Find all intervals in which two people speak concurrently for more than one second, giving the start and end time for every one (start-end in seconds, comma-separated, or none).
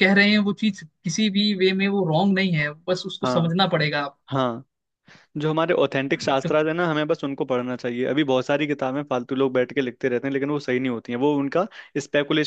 none